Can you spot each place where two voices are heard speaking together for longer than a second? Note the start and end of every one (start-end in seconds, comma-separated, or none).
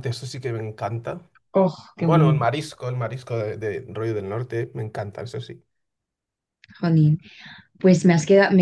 none